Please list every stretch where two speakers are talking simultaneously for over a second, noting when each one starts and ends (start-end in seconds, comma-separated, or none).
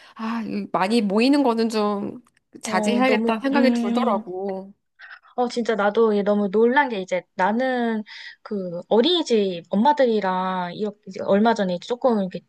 2.6-4.2